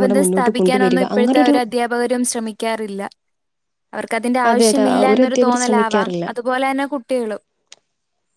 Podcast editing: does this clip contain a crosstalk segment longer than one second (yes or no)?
yes